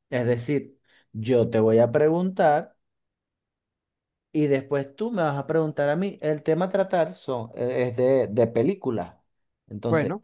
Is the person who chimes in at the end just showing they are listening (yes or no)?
yes